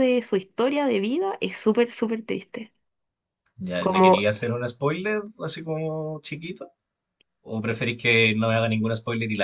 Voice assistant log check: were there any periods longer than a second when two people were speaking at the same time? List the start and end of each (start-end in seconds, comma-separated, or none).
none